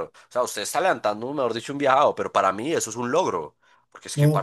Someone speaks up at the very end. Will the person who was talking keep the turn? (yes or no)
yes